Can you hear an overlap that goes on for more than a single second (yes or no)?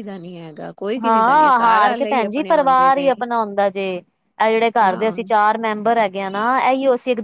yes